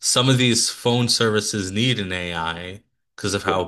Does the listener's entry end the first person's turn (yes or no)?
no